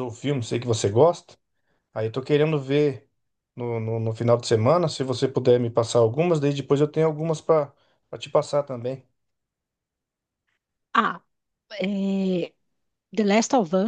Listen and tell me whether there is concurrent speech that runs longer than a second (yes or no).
no